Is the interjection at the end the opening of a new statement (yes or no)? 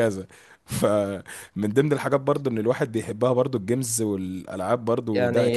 yes